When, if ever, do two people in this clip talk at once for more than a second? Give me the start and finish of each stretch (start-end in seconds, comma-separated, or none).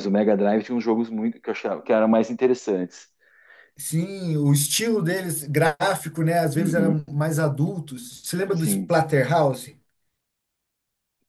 none